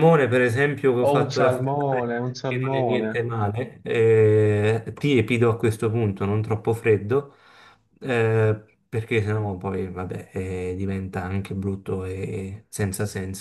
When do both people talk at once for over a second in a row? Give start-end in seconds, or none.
1.0-3.2